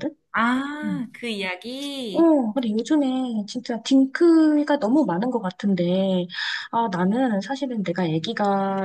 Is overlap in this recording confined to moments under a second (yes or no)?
yes